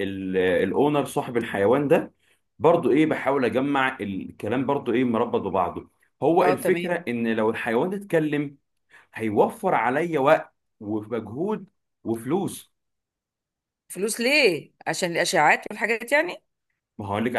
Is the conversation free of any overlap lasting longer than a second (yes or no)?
yes